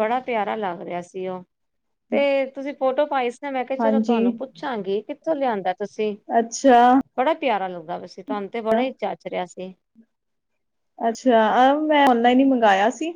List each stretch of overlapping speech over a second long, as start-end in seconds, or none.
none